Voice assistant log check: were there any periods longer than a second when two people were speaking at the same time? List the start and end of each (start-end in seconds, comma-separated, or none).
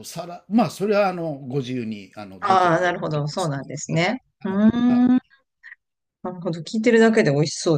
2.4-5.1